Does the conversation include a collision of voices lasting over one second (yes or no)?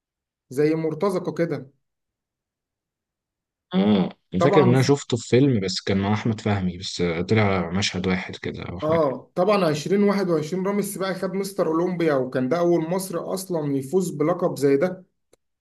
no